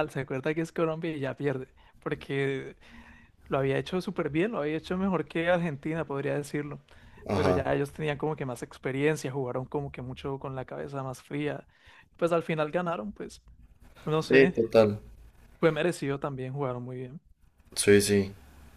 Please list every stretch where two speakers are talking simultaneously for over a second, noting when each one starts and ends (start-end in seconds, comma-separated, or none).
none